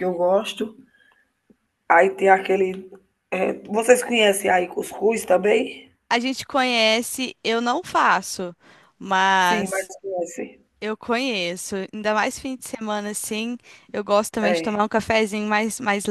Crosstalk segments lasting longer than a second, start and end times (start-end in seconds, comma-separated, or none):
none